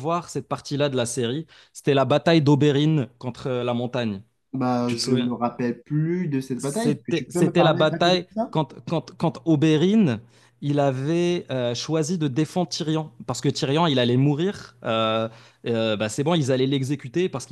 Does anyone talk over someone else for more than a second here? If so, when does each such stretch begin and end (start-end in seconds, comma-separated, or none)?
6.6-8.5